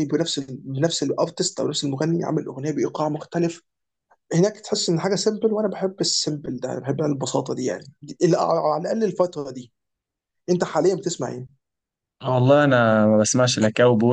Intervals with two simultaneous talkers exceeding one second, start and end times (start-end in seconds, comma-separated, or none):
none